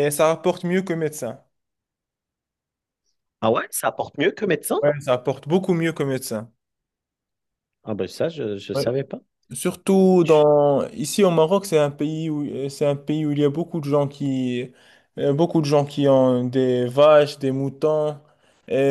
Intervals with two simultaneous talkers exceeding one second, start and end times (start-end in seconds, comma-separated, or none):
none